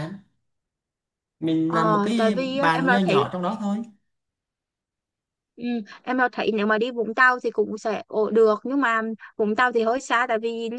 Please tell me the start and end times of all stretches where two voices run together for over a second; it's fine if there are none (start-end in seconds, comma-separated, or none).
1.7-3.2